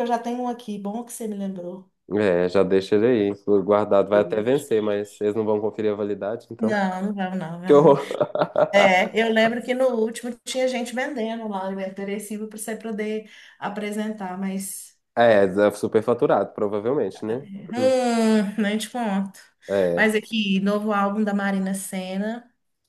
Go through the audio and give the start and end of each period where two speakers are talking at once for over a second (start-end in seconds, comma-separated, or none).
none